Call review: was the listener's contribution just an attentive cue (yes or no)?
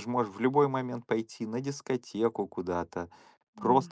yes